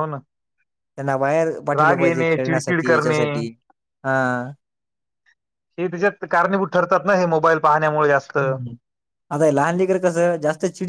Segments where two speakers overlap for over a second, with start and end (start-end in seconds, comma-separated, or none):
1.8-3.2